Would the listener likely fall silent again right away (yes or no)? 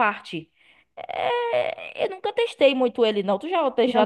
no